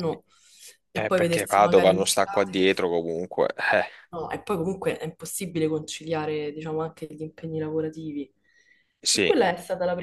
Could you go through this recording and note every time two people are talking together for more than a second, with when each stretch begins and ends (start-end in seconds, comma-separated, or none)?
0.9-2.9